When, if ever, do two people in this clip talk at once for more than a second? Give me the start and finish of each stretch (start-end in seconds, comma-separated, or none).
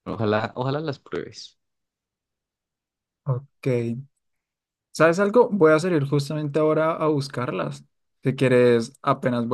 none